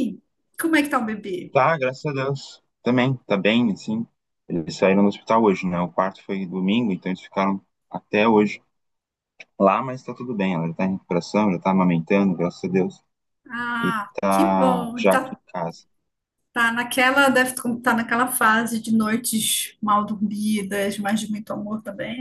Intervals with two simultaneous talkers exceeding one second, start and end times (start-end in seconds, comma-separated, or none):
13.8-15.4